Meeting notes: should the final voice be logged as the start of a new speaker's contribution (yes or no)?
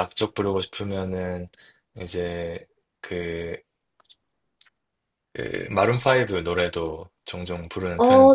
yes